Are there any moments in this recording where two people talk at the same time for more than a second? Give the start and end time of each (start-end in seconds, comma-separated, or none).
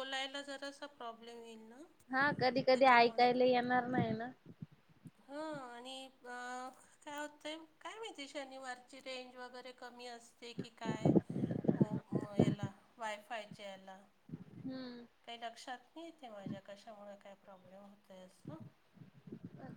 none